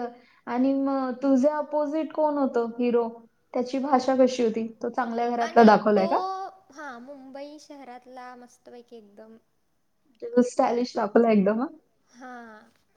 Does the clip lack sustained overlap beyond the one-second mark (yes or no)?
yes